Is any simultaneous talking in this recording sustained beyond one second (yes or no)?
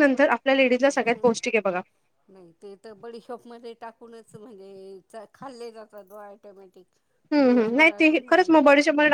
no